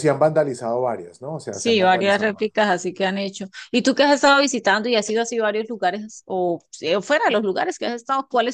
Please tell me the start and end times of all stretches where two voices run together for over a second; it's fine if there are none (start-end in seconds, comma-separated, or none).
1.5-2.7